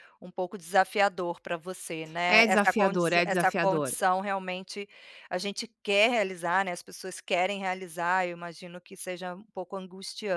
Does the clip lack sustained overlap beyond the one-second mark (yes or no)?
no